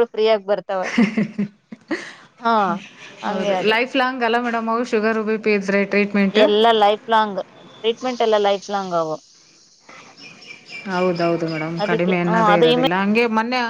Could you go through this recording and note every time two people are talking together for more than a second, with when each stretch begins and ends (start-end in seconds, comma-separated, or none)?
none